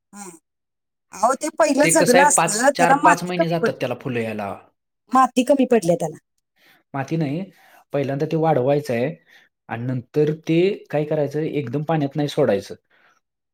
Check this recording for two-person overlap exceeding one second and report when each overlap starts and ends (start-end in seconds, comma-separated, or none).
2.0-3.9